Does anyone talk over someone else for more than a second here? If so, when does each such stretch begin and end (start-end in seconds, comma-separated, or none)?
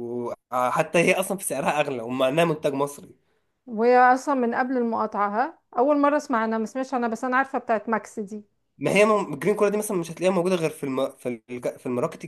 none